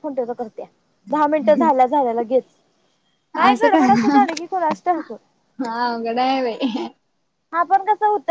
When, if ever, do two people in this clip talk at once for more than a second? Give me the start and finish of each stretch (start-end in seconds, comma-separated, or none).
none